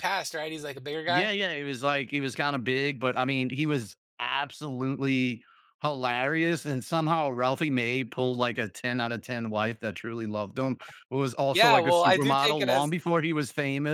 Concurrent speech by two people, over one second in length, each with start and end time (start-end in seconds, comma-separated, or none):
11.5-12.9